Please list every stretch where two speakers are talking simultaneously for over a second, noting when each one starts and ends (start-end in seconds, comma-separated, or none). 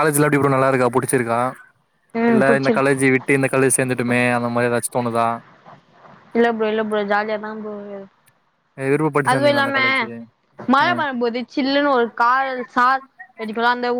none